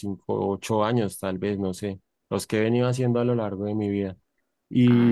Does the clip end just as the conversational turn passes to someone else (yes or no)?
yes